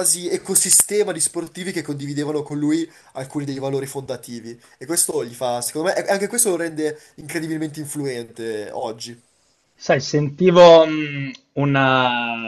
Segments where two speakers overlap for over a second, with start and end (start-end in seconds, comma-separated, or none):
none